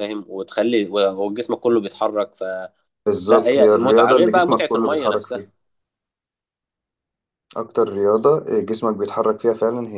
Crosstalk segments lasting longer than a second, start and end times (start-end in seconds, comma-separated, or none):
3.5-5.5